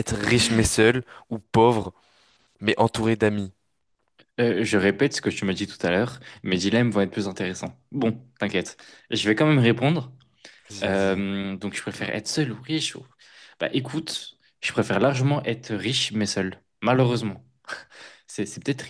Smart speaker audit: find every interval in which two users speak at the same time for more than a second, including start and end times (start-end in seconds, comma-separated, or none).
none